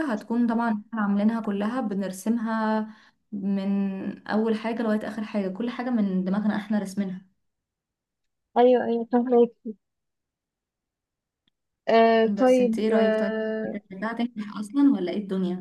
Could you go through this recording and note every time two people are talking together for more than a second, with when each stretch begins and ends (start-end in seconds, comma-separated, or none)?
12.3-13.8